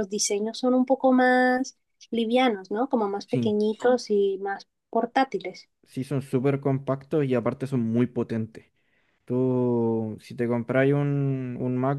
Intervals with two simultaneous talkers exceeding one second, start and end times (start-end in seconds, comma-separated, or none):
none